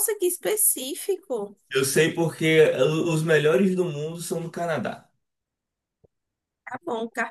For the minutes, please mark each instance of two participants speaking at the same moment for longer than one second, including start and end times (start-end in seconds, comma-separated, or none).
none